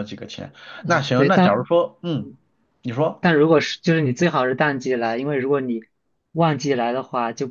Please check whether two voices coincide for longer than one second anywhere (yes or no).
no